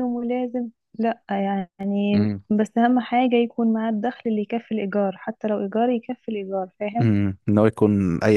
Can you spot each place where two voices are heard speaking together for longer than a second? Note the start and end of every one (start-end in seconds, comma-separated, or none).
none